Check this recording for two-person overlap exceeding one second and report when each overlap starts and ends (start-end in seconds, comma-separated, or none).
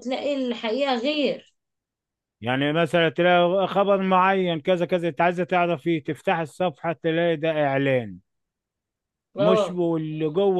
none